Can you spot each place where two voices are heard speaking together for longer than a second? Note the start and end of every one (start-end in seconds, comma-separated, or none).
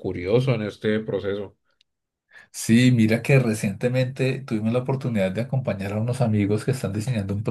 none